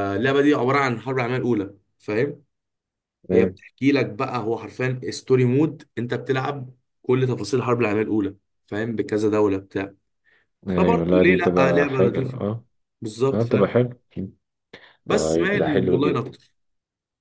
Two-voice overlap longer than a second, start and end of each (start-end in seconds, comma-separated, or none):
10.7-12.4, 15.1-16.3